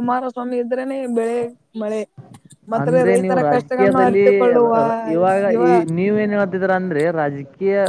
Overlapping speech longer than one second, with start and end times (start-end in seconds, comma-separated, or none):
2.8-4.3